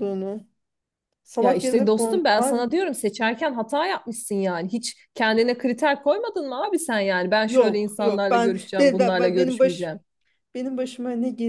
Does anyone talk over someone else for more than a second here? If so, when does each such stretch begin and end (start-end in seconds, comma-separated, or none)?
1.4-2.6, 7.5-9.9